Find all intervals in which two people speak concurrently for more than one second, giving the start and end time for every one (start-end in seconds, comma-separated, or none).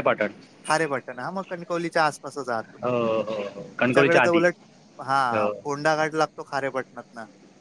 none